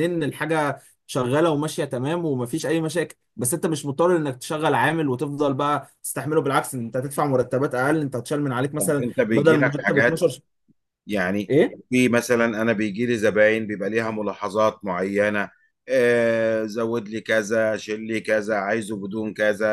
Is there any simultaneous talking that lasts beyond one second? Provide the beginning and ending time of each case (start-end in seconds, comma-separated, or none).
8.8-10.3